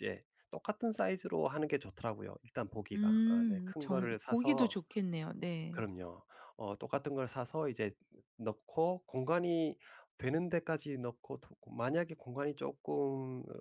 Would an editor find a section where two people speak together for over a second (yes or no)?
yes